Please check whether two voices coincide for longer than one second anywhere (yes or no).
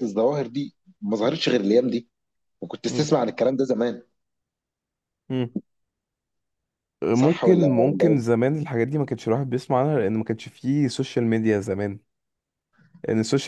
yes